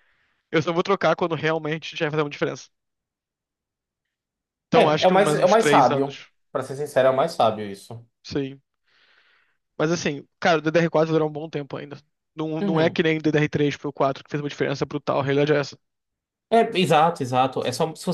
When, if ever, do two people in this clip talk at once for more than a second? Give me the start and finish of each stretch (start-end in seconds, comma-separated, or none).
4.7-6.3